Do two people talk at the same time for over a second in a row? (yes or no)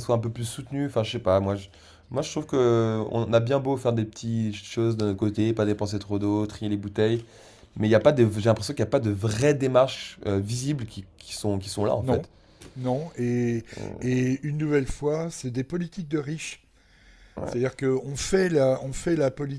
no